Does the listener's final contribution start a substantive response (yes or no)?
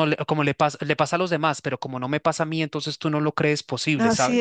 yes